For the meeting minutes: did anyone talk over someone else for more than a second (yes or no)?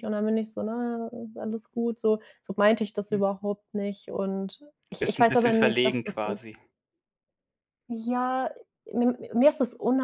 yes